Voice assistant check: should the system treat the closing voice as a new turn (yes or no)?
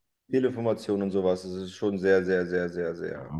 yes